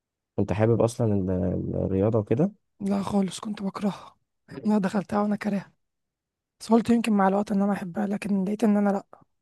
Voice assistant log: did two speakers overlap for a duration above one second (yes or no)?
no